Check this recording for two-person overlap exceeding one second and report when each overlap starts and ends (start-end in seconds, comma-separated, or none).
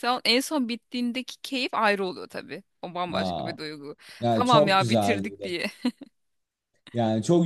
4.2-5.5